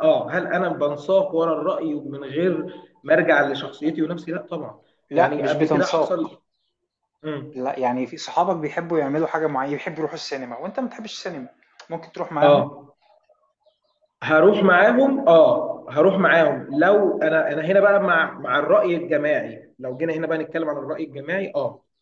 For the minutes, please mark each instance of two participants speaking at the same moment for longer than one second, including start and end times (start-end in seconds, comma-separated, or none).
5.1-6.4